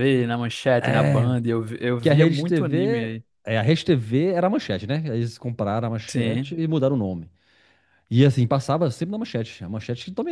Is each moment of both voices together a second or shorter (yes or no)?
no